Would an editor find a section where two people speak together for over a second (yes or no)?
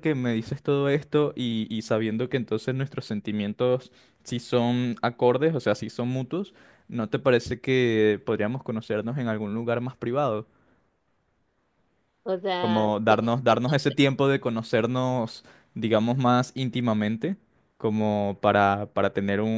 yes